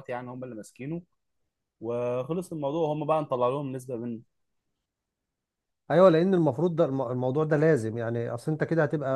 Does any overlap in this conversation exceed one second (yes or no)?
no